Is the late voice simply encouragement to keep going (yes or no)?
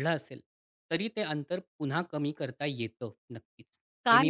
no